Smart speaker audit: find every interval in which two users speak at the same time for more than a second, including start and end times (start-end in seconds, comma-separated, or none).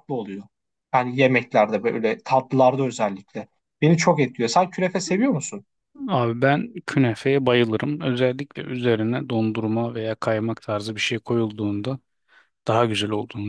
none